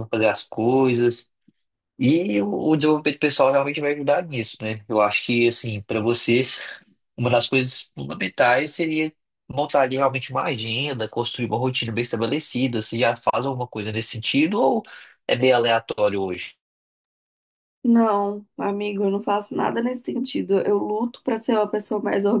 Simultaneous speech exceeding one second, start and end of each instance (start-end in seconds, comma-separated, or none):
none